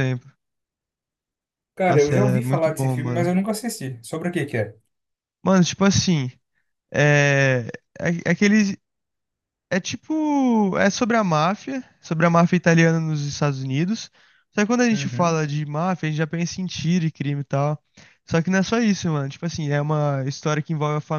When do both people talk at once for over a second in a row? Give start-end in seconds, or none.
1.9-3.3